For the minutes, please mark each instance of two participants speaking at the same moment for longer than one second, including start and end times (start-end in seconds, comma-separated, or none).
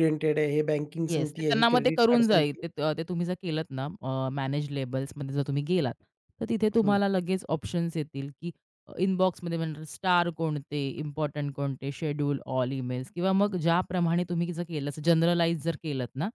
1.1-2.6